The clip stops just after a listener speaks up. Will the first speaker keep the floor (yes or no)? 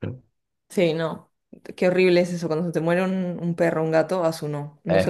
no